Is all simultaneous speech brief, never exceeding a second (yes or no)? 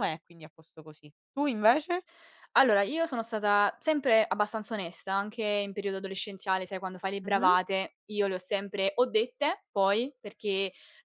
yes